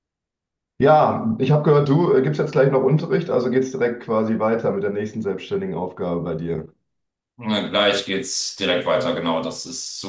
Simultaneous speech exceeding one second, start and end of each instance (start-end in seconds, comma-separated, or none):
none